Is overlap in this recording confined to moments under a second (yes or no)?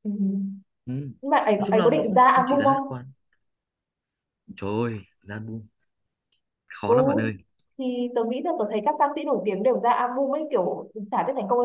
no